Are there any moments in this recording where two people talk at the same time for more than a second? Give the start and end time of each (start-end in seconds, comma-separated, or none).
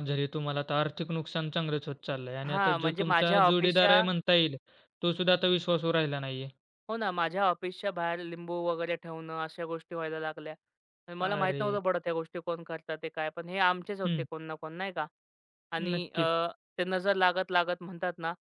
2.5-4.0